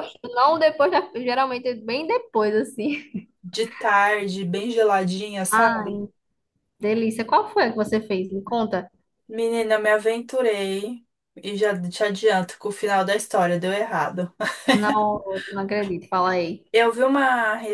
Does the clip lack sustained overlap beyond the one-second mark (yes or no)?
yes